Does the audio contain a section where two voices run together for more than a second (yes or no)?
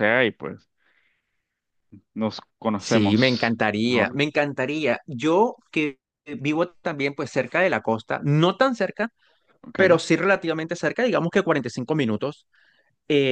yes